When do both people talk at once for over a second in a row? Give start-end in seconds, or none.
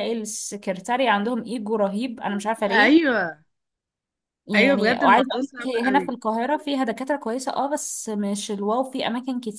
4.5-6.1